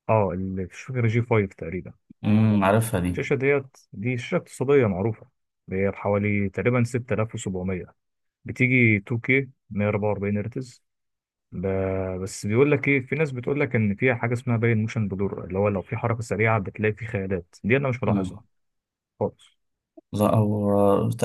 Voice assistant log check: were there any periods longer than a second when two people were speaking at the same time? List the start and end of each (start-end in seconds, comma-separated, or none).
none